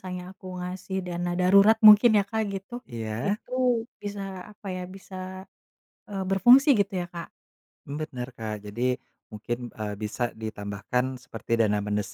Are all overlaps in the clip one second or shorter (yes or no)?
yes